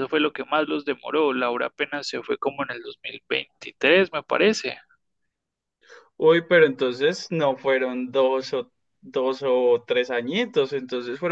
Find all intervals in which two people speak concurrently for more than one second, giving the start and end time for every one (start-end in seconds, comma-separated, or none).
none